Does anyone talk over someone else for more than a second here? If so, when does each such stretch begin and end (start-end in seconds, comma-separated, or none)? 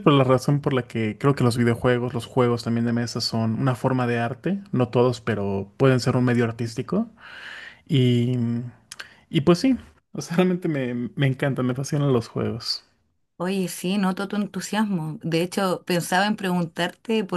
none